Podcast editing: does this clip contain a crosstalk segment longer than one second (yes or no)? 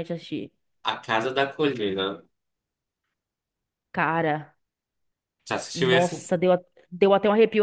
no